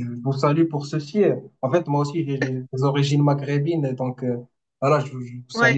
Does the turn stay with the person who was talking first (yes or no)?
yes